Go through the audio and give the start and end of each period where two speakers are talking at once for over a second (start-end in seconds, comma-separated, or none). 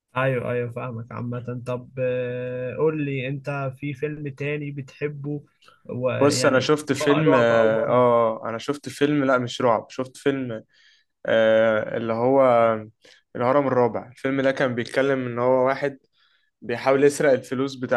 6.2-8.0